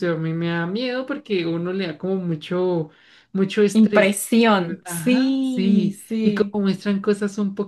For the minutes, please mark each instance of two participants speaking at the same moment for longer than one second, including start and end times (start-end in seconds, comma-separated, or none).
4.8-6.6